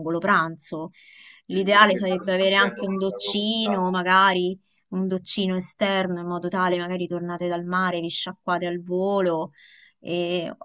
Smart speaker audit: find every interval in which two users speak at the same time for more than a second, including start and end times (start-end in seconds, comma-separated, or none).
1.5-4.0